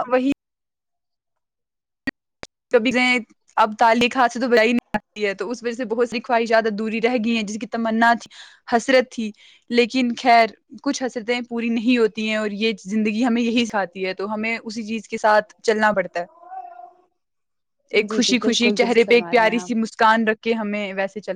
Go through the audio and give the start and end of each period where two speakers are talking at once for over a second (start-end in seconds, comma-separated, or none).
18.1-19.9